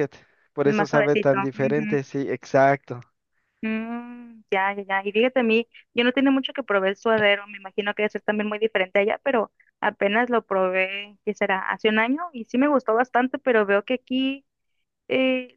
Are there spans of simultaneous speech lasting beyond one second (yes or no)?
yes